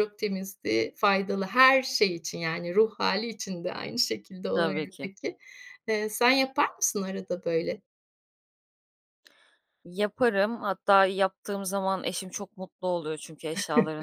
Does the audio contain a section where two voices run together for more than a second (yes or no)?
no